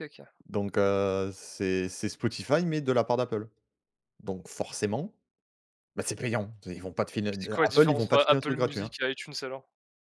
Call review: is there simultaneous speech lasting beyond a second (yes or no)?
yes